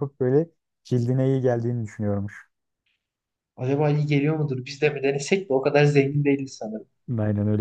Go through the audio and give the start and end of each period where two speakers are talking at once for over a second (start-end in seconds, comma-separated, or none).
none